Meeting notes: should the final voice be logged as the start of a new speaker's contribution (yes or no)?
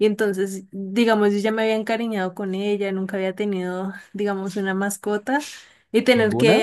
no